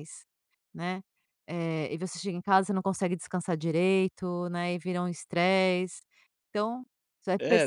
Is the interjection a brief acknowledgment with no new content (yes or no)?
no